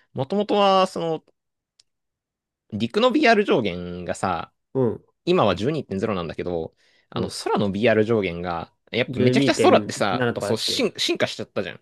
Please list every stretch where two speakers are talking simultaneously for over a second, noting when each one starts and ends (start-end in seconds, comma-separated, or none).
9.1-10.9